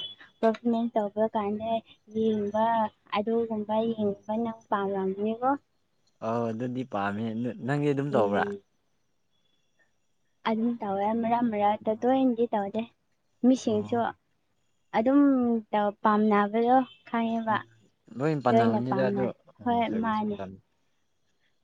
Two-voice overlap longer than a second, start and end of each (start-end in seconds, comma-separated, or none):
18.5-20.4